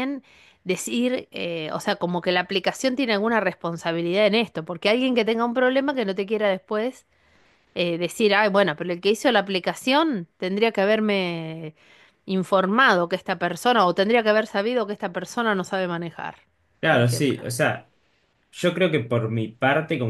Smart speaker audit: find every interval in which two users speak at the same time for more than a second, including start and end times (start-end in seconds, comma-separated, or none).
none